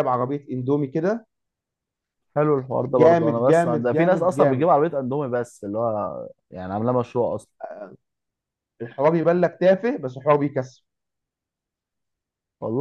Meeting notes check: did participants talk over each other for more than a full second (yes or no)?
yes